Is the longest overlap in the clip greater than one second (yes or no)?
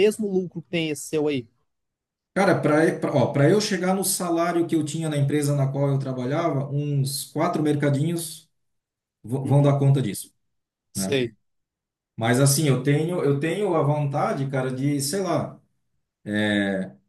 no